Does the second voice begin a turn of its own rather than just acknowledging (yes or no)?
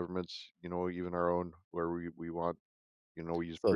yes